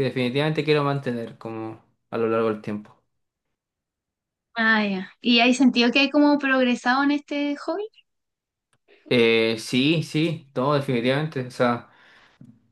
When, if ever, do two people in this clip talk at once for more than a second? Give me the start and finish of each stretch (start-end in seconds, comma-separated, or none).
none